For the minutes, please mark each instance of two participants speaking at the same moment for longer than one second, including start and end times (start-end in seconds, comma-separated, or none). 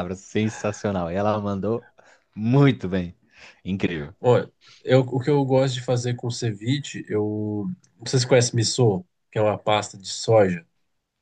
none